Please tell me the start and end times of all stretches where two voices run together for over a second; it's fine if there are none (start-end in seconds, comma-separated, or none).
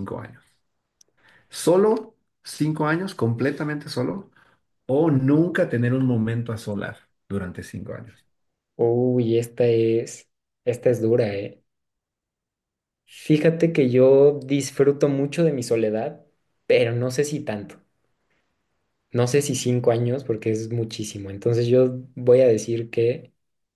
none